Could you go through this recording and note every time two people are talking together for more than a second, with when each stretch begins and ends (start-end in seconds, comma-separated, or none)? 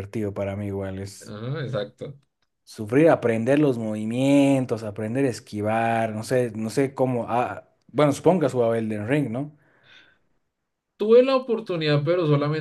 none